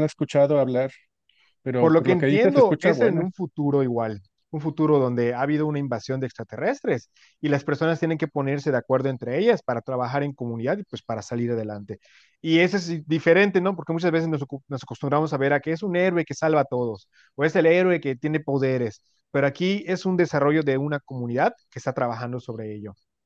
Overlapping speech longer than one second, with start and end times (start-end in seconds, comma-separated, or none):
1.8-3.3